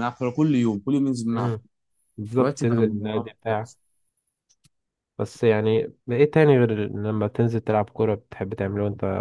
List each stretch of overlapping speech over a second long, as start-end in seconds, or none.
2.4-3.7